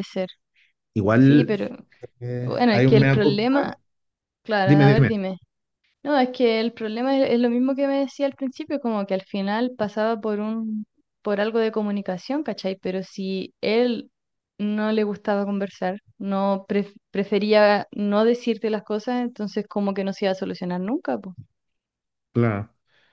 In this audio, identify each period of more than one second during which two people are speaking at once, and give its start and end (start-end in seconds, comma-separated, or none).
2.4-3.7